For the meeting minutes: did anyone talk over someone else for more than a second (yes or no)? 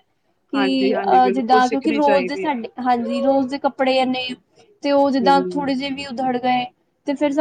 yes